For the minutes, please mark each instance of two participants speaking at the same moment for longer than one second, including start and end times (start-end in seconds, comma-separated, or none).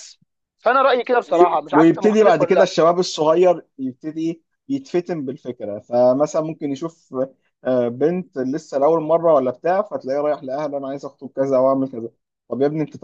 1.3-2.7